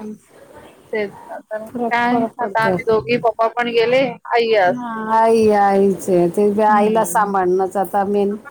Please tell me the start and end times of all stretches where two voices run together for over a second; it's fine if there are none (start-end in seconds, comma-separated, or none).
none